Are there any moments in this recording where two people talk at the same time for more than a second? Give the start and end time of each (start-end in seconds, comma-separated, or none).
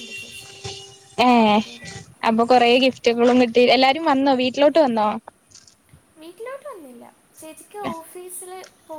none